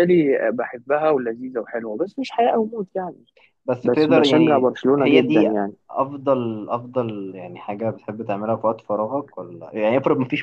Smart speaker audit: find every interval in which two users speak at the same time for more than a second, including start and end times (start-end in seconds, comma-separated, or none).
3.8-5.5